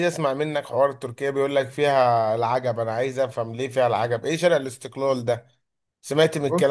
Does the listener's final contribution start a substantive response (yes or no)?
no